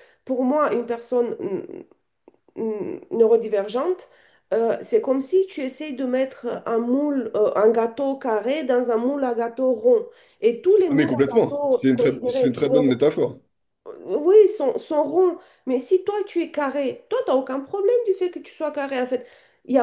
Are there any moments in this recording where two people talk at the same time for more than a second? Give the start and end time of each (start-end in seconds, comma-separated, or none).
10.9-13.0